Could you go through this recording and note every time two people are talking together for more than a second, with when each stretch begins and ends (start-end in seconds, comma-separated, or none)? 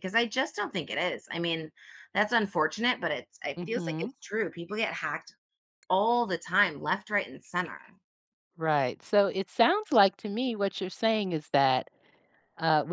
none